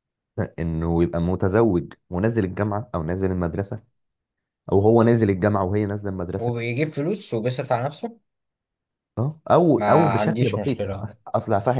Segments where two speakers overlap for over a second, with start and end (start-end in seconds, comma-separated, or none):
9.8-11.1